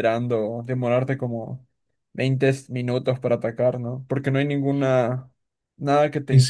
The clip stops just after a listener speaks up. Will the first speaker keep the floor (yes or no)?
no